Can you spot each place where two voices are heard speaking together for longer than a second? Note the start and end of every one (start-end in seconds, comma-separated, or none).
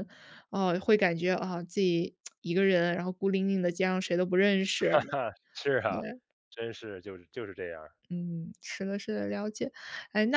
none